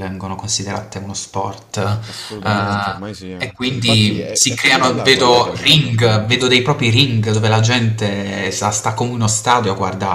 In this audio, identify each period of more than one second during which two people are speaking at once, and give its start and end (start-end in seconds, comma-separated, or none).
3.5-6.1